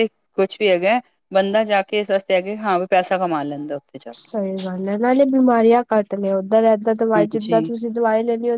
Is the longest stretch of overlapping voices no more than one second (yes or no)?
yes